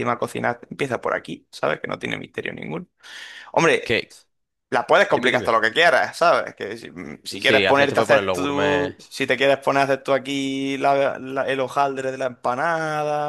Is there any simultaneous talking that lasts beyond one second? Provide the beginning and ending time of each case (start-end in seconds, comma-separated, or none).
7.4-8.9